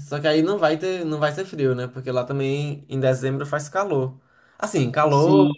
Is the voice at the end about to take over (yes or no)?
no